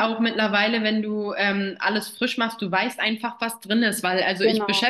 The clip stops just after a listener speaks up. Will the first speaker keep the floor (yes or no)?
yes